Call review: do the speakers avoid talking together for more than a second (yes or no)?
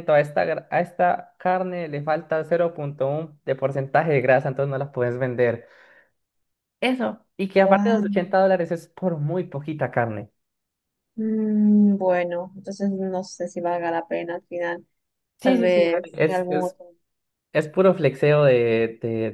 no